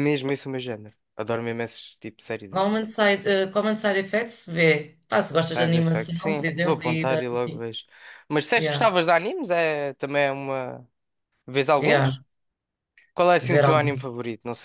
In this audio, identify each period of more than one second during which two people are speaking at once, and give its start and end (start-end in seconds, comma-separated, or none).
5.3-7.6